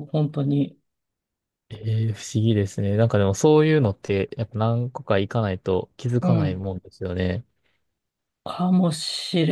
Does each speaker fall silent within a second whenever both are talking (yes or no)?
yes